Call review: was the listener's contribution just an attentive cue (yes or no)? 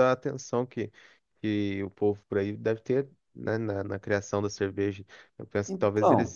yes